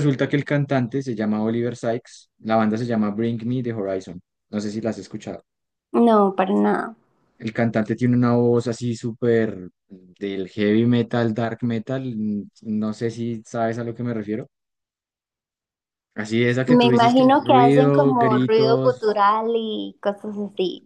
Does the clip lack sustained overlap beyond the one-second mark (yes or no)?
no